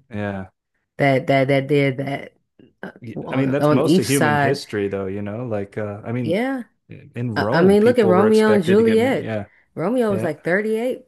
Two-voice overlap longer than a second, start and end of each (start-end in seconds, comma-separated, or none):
3.3-4.6, 7.4-9.3